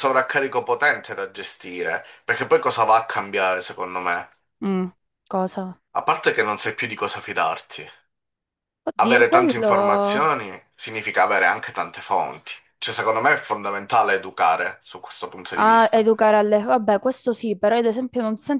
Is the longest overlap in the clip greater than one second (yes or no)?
yes